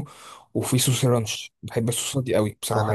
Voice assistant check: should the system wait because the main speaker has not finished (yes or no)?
no